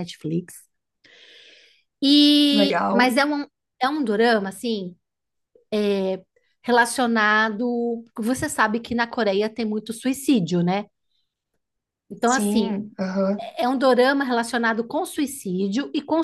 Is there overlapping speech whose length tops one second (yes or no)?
no